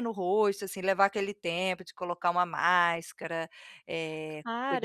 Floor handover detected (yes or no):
yes